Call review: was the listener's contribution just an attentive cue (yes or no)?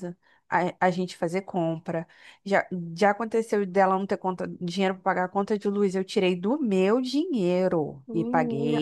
no